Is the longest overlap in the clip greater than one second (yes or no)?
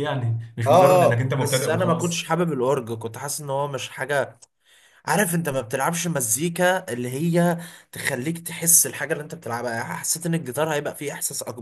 yes